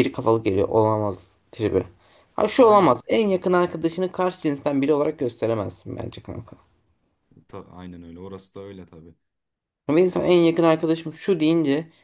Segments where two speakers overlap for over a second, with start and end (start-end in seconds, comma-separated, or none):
none